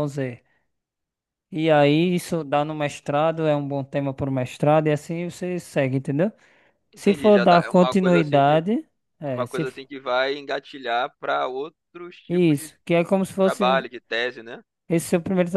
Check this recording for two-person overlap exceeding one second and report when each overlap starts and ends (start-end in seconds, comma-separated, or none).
6.9-8.6